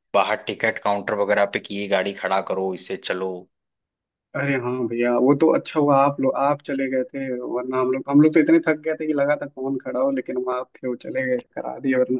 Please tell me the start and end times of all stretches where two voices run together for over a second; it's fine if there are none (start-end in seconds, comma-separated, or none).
none